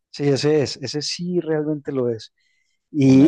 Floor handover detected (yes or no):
yes